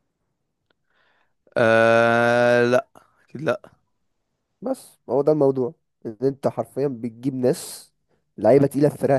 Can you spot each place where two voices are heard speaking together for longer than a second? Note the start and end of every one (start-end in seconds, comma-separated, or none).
none